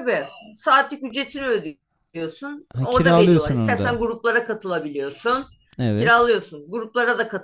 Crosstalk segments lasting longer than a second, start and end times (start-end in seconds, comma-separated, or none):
2.7-4.0